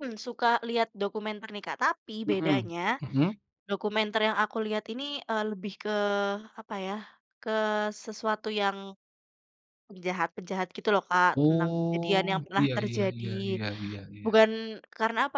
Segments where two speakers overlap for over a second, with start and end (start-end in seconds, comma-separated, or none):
11.3-13.2